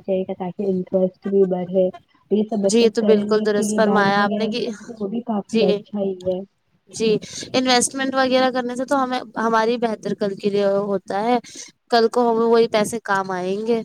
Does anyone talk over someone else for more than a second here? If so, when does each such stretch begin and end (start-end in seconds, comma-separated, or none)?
2.7-4.7